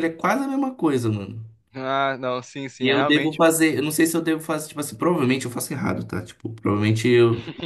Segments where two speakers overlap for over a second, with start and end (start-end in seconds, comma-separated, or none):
none